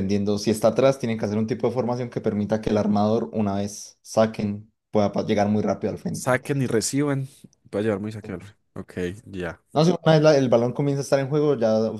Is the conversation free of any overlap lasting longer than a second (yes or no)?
yes